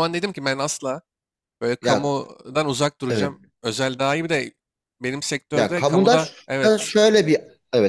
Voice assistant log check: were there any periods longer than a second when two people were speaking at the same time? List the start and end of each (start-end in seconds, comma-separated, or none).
5.5-6.9